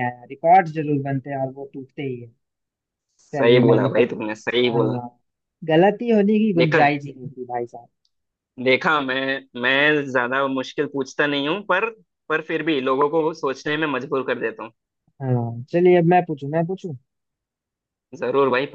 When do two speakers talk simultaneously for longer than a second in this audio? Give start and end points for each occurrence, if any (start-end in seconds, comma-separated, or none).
3.3-5.0